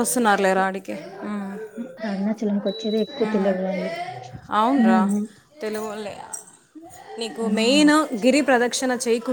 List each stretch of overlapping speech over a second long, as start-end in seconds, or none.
none